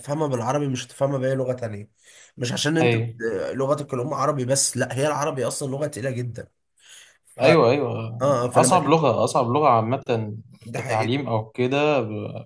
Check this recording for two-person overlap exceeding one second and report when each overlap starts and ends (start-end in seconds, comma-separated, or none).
none